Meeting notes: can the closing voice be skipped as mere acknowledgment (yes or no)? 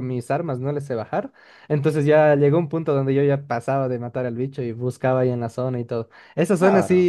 yes